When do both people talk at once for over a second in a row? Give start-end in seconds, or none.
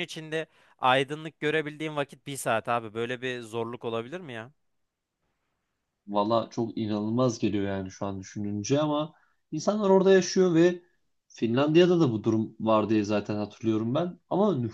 none